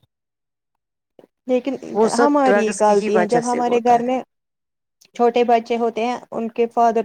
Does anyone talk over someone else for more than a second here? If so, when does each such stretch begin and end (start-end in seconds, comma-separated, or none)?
2.2-4.1